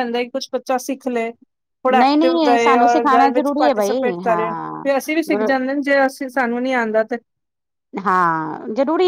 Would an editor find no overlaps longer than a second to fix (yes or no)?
no